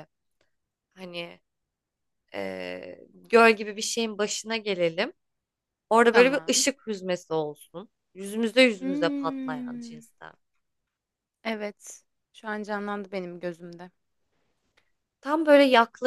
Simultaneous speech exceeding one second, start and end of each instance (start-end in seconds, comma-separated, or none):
8.8-10.1